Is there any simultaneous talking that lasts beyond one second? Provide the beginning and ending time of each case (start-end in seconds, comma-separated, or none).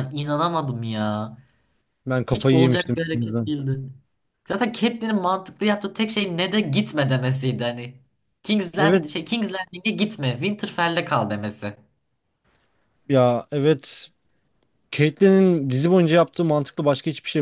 2.3-3.5